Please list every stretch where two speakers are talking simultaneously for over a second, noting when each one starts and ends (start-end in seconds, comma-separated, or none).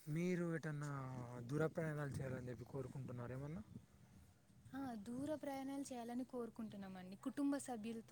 none